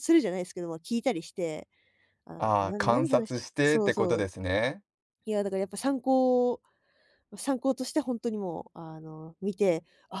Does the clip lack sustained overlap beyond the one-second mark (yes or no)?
no